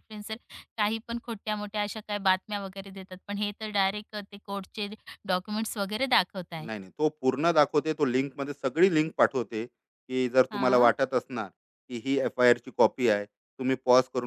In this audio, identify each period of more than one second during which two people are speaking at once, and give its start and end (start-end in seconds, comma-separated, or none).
none